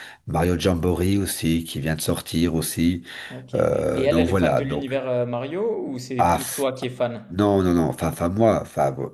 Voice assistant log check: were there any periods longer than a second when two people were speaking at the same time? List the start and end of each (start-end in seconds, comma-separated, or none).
3.5-4.9